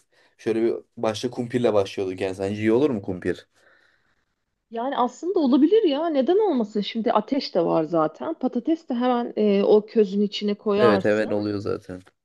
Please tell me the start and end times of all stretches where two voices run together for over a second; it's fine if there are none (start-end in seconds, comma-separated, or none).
none